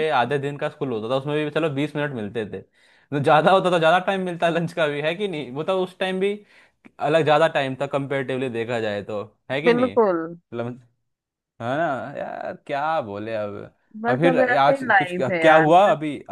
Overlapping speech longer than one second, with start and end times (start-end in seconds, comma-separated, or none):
14.0-15.7